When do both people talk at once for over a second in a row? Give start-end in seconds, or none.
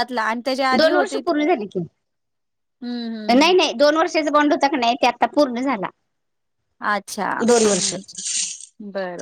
none